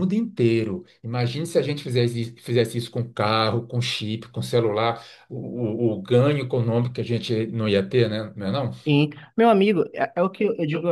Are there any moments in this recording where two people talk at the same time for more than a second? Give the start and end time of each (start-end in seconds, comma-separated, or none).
none